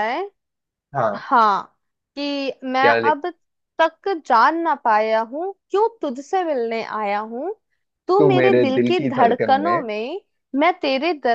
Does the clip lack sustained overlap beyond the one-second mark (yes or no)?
no